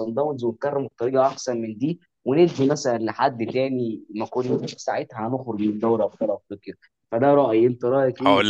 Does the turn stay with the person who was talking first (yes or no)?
no